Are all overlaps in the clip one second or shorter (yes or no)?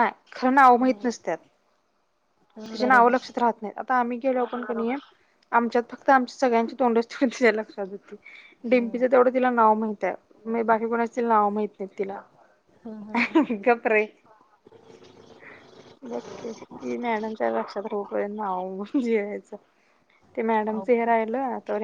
yes